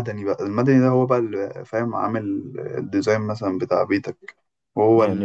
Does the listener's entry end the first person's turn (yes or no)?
yes